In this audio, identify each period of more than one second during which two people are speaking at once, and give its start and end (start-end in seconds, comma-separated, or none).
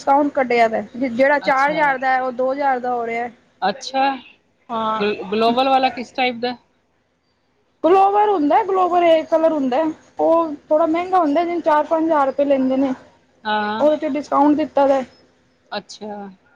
none